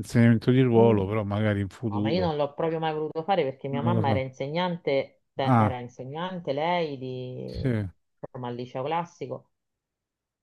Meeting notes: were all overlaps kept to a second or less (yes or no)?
yes